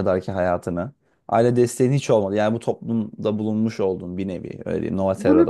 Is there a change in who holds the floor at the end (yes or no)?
yes